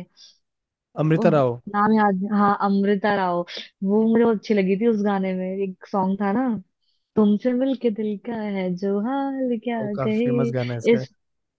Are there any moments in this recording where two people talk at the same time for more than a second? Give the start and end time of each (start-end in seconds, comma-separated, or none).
none